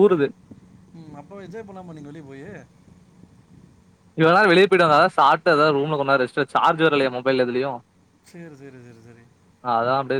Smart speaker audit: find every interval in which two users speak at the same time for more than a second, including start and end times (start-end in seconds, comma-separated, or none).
none